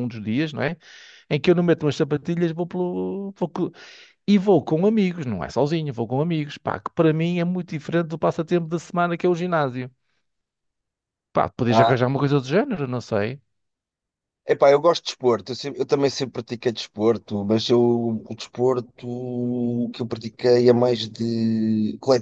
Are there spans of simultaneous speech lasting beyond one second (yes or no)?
no